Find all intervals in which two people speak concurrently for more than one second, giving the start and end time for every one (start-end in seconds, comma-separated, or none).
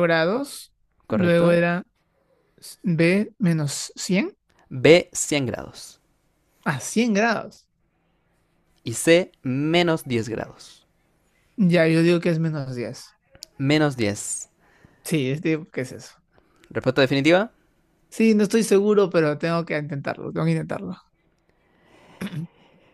none